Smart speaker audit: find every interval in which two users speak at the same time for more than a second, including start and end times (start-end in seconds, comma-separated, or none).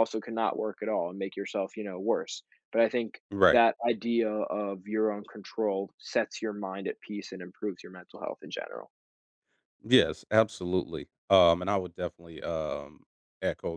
none